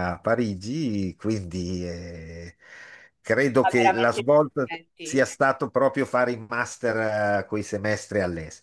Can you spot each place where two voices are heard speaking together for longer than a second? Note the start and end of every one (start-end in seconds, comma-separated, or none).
3.6-5.2